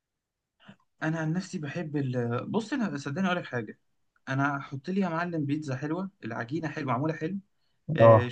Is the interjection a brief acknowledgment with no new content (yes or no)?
yes